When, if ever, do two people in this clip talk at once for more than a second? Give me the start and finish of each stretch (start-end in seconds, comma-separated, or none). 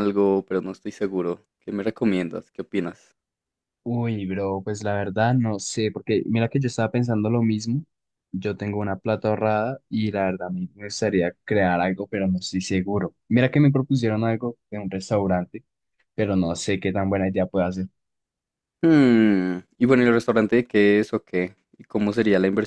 none